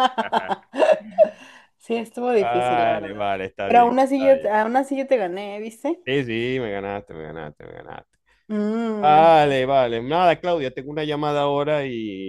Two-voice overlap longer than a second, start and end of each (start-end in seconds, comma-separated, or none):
2.3-4.5